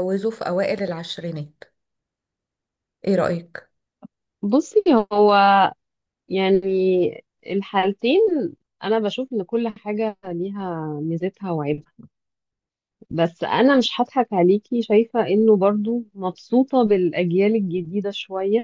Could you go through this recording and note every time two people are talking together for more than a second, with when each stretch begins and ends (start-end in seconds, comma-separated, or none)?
none